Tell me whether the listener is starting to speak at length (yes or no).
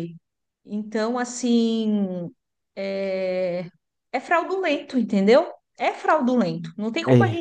no